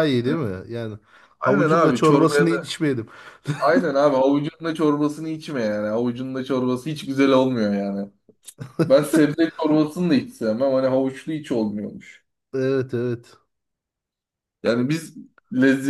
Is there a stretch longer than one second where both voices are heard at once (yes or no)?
yes